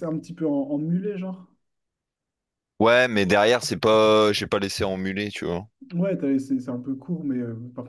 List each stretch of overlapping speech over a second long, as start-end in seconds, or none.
none